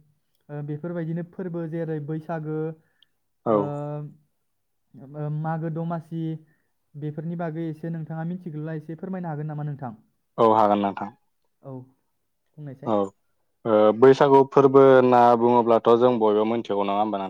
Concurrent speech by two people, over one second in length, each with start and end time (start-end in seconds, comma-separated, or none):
none